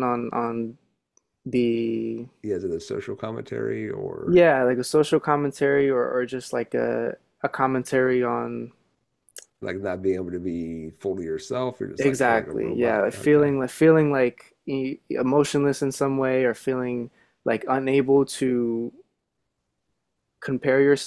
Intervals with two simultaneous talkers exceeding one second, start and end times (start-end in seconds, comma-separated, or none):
12.0-13.5